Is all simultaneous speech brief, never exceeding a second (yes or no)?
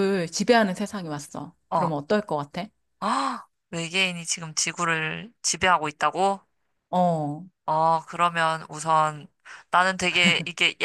yes